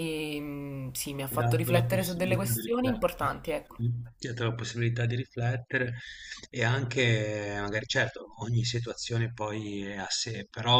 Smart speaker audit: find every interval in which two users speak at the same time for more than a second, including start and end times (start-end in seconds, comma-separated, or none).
1.3-3.3